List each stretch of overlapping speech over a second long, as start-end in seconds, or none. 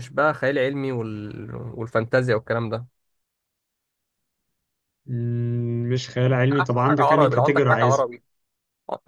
6.5-8.1